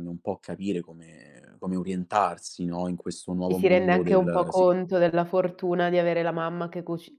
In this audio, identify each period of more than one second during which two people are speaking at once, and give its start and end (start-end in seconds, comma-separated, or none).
3.4-4.7